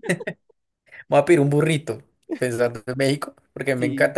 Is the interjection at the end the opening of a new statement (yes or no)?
no